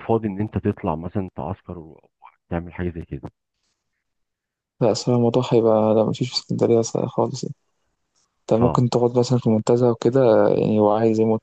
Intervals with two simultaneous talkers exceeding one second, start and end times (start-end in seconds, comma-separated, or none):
none